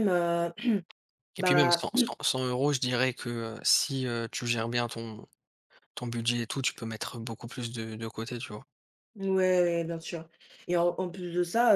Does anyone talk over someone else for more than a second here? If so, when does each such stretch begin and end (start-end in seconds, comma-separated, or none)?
none